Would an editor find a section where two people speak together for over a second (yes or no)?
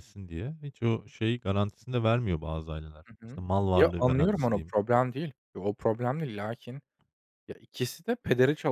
yes